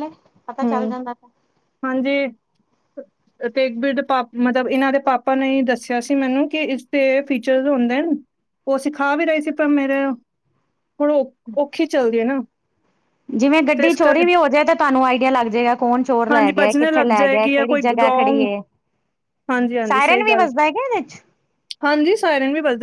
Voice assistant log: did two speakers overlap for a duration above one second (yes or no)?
yes